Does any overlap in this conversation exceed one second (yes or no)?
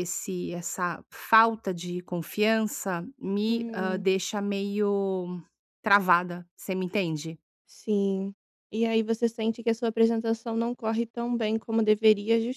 no